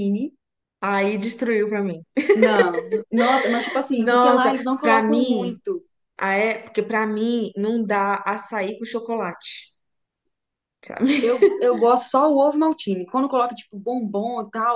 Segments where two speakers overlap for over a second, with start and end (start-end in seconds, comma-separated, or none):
3.9-5.6